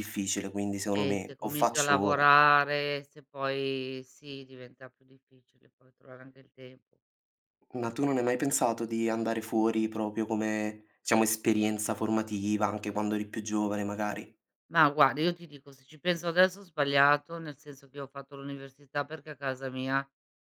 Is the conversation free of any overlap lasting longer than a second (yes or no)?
no